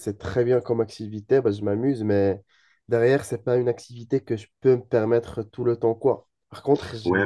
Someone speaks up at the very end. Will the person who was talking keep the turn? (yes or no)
no